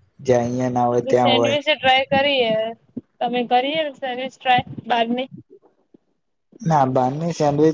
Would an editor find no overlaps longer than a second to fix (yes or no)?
yes